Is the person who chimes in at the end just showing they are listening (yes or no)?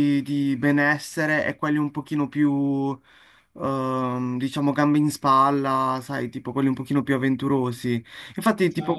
yes